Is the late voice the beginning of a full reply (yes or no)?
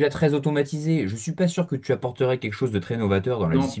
yes